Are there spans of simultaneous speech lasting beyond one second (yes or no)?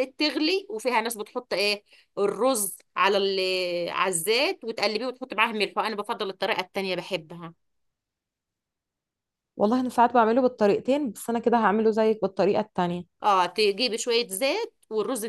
no